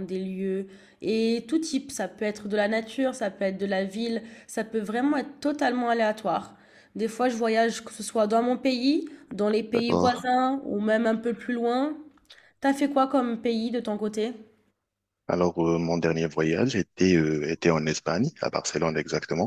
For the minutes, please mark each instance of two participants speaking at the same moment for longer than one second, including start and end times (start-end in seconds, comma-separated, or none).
none